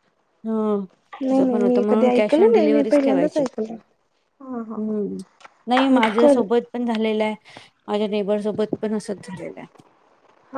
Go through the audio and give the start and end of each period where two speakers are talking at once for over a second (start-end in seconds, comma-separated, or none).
1.3-3.4